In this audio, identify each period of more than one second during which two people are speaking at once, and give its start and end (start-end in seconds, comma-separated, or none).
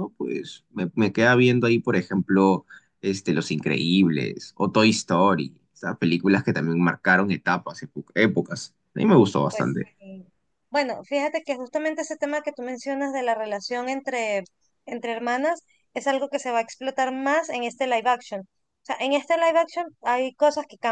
none